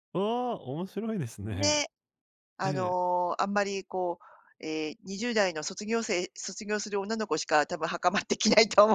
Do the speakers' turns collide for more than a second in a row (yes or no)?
no